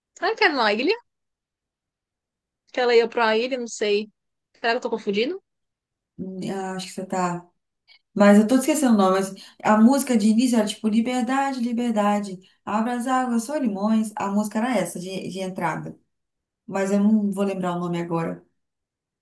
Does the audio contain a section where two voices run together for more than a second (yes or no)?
no